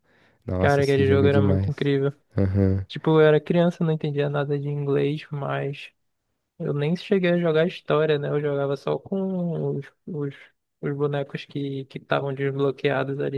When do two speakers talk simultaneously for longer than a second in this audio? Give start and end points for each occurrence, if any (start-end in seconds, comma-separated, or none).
0.6-1.9